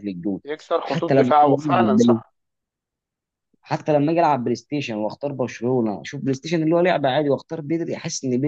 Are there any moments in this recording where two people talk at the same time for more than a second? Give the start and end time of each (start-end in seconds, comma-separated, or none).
0.8-2.2